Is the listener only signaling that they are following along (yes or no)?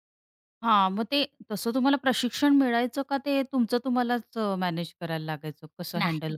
no